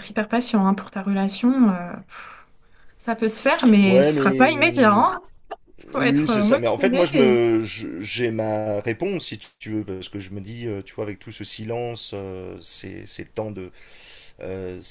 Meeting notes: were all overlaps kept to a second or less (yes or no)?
no